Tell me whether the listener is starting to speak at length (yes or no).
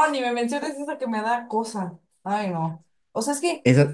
no